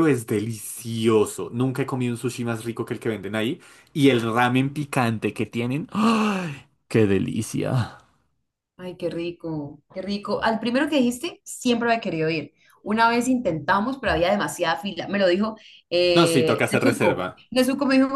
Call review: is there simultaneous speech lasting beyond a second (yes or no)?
yes